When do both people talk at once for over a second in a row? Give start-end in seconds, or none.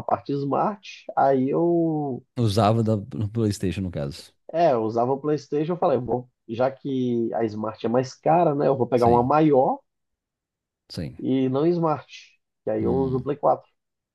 none